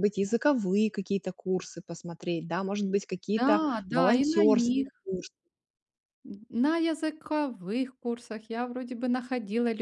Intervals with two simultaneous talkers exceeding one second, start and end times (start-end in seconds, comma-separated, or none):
3.4-4.9